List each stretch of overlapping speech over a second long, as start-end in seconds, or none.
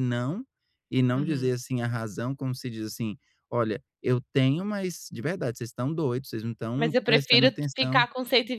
6.8-8.1